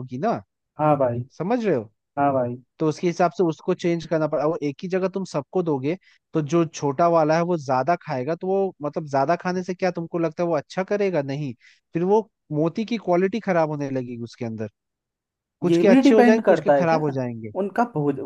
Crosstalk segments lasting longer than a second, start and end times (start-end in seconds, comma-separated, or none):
15.7-17.0